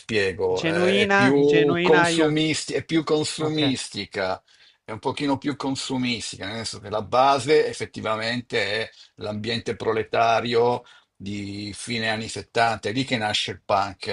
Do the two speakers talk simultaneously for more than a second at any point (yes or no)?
yes